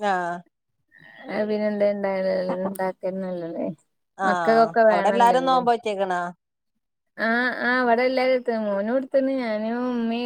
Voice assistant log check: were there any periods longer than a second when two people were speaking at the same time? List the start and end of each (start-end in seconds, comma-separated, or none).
4.3-5.6